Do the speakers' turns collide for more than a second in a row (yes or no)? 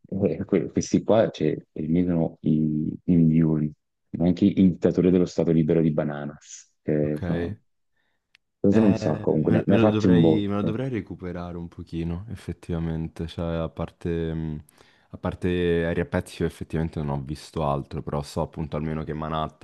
yes